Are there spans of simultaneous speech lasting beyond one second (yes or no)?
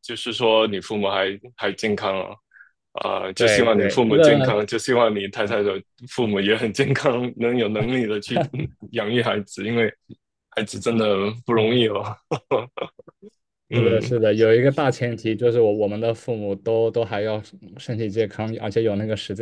yes